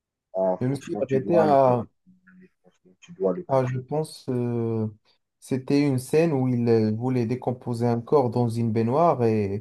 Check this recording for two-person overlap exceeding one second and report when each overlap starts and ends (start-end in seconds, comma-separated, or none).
0.6-1.8